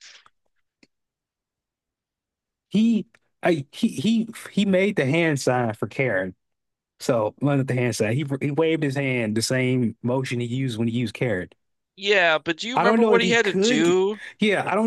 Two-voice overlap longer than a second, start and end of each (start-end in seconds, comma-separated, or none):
12.7-14.0